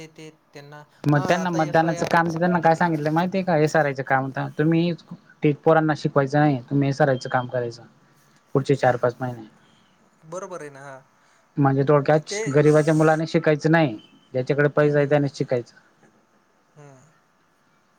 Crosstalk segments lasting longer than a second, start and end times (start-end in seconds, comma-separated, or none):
1.1-2.9